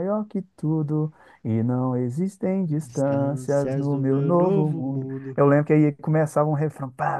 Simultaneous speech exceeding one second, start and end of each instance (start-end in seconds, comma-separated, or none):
2.6-5.4